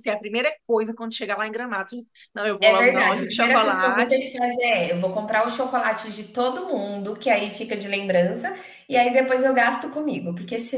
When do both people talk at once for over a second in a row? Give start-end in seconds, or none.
2.6-4.3